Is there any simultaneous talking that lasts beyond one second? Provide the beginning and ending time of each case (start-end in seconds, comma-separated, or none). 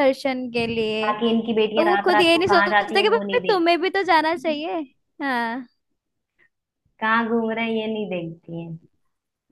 1.8-3.4